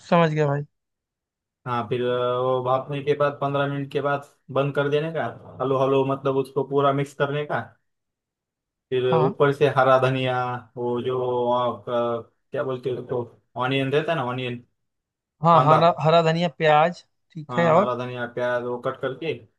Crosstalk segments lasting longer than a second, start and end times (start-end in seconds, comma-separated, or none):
none